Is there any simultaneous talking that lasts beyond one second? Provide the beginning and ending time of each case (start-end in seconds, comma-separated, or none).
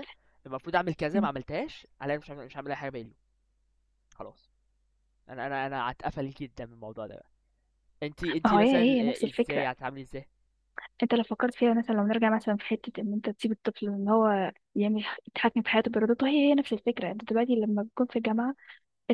8.4-9.7